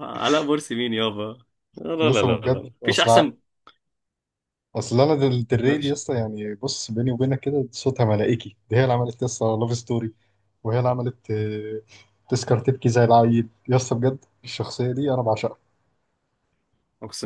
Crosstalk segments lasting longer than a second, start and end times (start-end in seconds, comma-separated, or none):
2.0-3.3